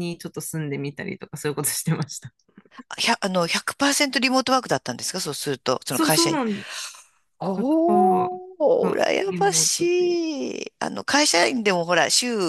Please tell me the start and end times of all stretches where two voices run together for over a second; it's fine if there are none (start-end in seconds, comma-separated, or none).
7.5-10.2